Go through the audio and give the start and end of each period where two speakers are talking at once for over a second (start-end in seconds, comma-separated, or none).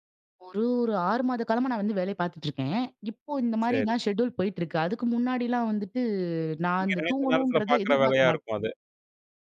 6.8-8.5